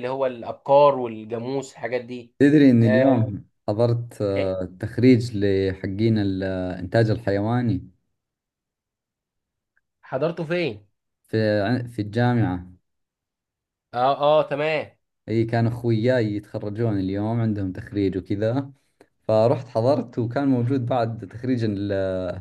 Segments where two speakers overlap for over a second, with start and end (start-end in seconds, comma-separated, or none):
none